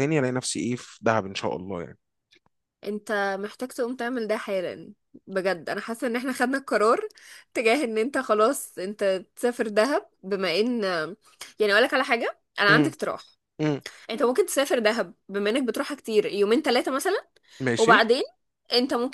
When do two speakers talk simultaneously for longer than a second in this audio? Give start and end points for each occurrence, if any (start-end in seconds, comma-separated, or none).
none